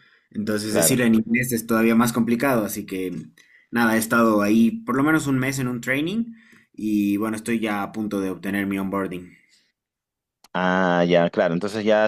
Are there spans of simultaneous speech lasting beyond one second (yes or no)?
no